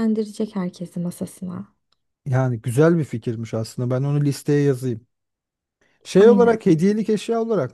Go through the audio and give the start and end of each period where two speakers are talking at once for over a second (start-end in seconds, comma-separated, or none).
none